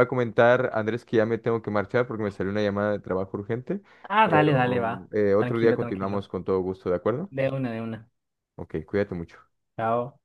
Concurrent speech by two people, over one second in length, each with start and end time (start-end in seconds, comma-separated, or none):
4.2-6.3